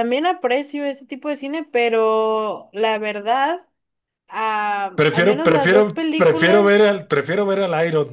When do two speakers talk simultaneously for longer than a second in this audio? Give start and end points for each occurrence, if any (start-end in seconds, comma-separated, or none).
5.0-6.9